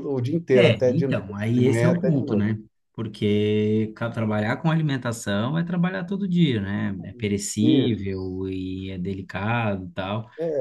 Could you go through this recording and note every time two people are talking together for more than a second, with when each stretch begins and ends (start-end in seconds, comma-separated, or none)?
0.5-2.5